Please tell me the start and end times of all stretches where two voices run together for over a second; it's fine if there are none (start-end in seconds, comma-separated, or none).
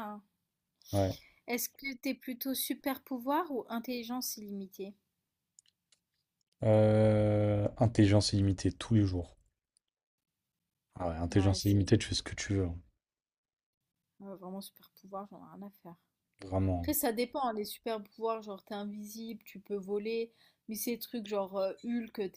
none